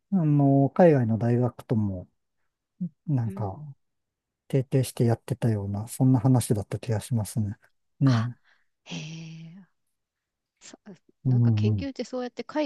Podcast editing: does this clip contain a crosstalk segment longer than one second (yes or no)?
no